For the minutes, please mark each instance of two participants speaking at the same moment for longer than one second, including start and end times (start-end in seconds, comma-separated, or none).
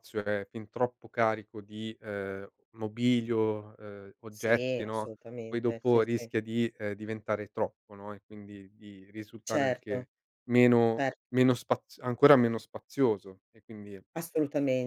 4.3-6.3